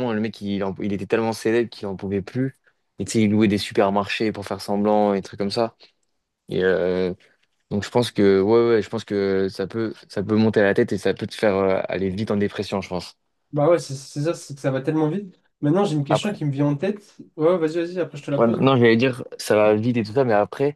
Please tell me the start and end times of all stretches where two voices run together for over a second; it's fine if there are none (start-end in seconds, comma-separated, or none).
none